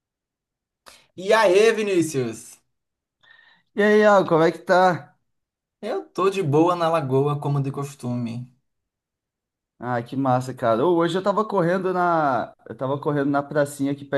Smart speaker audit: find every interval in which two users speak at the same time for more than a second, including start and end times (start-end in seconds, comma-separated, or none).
none